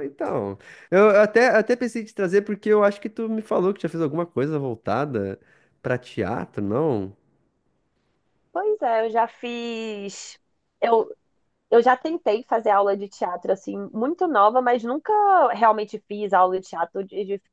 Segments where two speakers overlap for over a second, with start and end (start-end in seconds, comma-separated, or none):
none